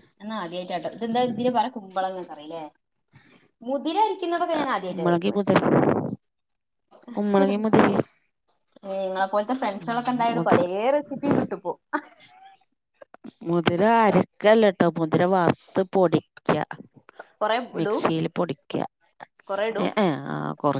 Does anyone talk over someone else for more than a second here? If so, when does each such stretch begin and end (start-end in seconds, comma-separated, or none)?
none